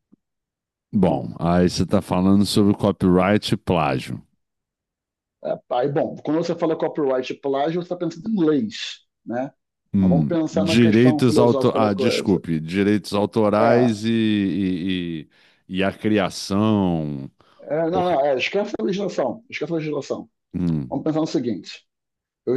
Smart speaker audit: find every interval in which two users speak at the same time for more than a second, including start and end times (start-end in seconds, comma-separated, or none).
9.9-12.4